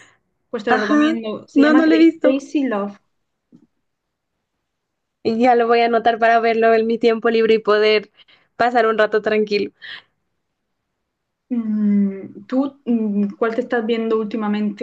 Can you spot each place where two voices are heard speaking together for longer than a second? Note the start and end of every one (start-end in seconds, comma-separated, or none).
0.7-2.4